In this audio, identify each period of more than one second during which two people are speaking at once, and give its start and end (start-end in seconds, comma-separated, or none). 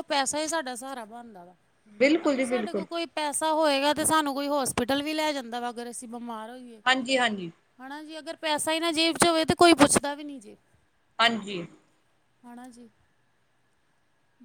none